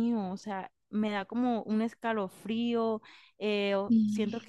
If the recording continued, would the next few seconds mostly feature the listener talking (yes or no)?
no